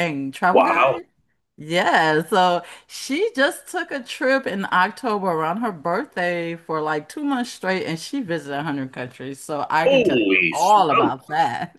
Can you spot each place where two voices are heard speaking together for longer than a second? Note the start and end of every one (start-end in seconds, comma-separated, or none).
9.8-11.1